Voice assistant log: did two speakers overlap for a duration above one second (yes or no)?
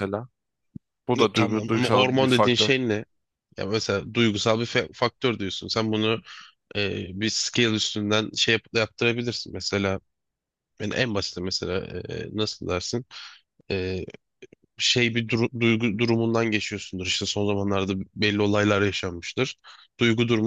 yes